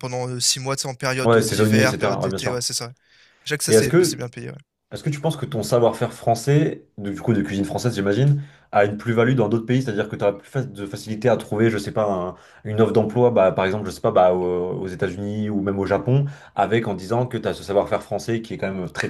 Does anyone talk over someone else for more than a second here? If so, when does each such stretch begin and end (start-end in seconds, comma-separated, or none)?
1.2-2.6